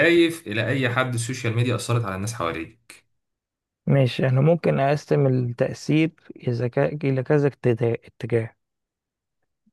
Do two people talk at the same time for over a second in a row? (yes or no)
no